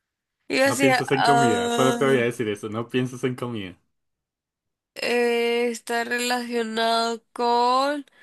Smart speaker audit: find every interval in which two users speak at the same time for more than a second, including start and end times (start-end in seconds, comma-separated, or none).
0.7-2.2